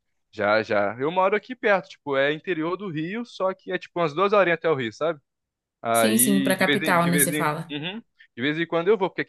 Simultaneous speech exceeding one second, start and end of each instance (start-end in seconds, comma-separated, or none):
5.9-7.7